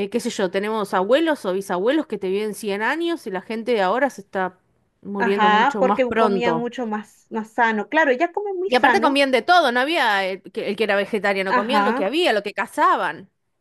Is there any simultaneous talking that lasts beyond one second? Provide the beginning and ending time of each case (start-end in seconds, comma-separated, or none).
5.2-6.7